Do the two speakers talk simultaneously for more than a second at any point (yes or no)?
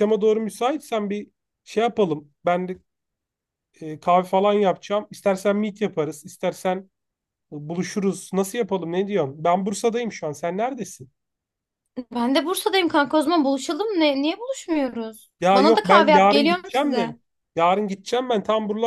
yes